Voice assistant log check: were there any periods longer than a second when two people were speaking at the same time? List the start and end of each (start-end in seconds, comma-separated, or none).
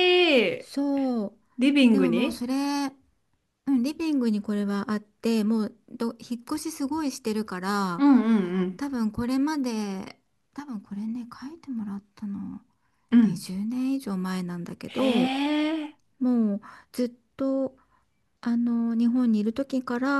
none